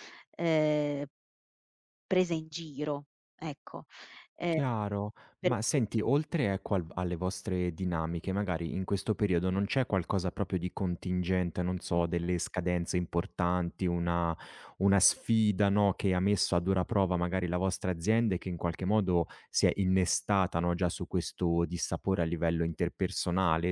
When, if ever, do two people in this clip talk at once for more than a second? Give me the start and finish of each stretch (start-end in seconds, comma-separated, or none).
none